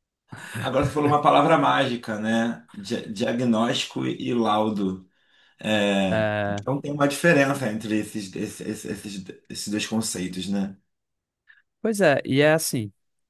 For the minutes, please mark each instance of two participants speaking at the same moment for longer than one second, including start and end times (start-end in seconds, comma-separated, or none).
none